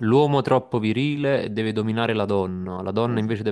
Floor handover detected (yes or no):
no